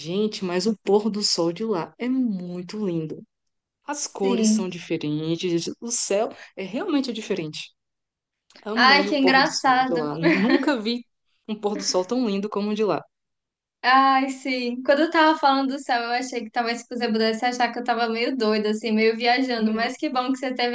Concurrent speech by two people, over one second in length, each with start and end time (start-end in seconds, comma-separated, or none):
8.7-10.1